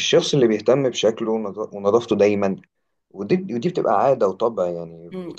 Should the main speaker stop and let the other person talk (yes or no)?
yes